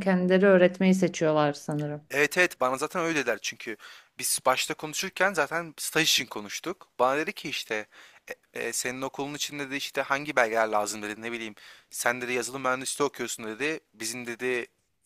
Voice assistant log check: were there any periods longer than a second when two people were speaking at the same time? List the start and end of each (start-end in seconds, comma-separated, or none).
none